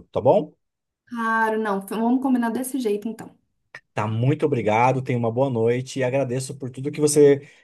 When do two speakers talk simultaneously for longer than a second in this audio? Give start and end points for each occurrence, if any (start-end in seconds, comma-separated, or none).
none